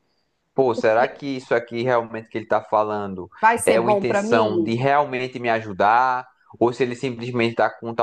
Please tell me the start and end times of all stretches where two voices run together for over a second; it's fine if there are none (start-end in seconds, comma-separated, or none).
3.4-4.8